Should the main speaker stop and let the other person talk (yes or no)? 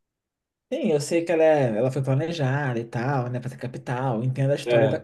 no